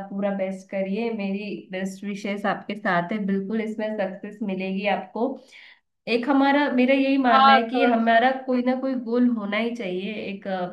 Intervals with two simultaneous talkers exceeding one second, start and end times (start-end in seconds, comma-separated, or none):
7.3-9.1